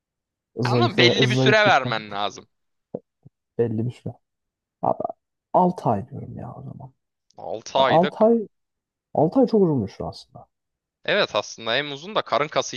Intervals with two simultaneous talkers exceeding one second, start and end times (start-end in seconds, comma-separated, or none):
0.6-1.9